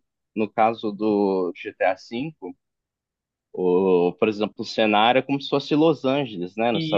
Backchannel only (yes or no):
no